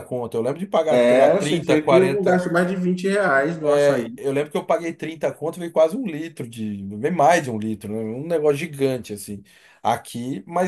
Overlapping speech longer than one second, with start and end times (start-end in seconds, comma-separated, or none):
0.9-2.5